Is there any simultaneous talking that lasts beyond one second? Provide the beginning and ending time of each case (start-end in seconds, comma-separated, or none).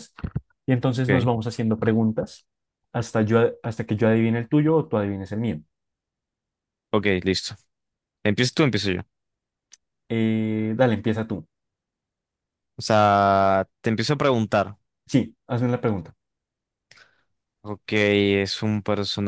none